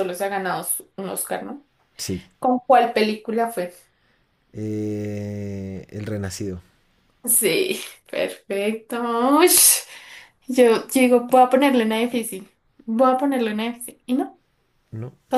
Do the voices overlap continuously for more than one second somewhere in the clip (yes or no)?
no